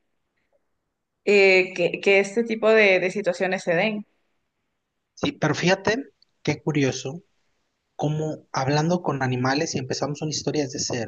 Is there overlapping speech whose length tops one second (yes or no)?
no